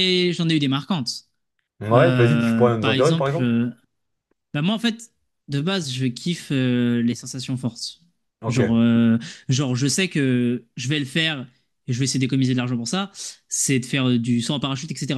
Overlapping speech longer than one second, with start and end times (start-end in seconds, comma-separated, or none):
1.9-3.5